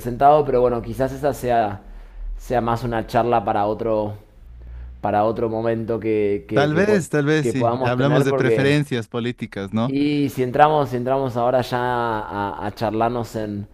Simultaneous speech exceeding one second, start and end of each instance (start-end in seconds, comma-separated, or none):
6.5-8.8